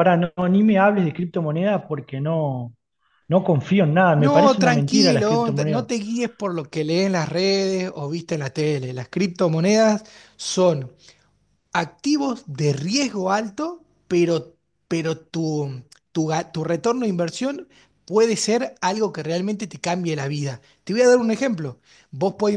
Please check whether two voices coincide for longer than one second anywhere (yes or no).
yes